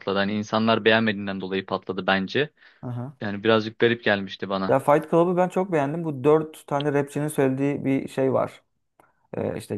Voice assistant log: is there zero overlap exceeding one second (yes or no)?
yes